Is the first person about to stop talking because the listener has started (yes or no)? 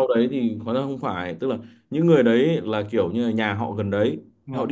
no